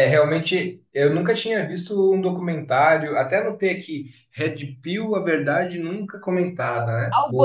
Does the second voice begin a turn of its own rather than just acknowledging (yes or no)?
yes